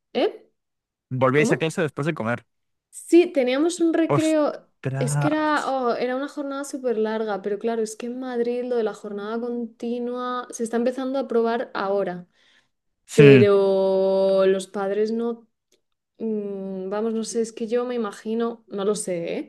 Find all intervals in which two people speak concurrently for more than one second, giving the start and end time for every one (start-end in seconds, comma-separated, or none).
4.2-5.6